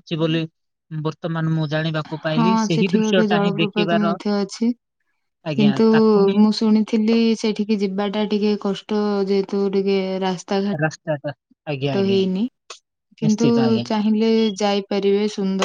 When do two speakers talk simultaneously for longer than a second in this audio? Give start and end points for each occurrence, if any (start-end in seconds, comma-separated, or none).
2.4-4.2